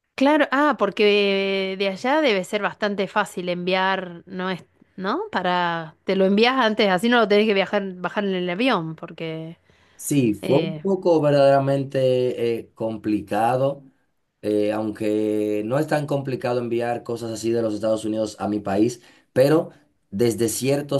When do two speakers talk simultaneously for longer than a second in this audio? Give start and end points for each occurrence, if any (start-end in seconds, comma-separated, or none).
none